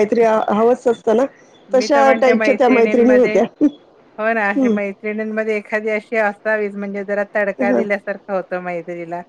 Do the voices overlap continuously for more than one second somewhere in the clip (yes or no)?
yes